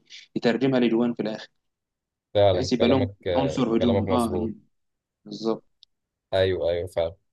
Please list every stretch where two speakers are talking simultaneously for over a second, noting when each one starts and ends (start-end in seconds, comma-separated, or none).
2.5-4.5